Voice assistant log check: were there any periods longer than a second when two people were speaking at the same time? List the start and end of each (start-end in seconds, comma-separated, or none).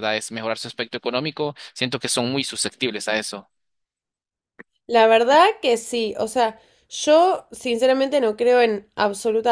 none